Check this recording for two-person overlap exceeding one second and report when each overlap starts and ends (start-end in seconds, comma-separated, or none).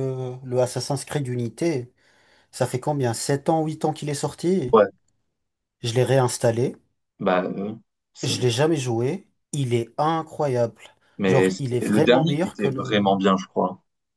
11.3-13.1